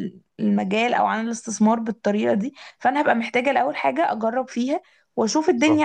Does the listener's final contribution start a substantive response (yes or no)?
no